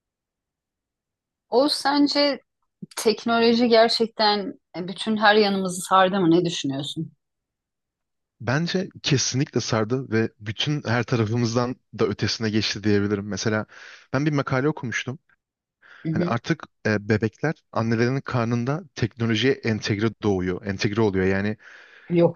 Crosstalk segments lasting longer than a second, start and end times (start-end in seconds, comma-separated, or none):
none